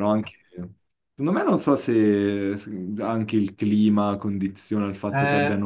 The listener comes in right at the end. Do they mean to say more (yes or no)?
yes